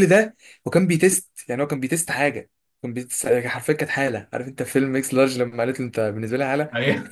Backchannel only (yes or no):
yes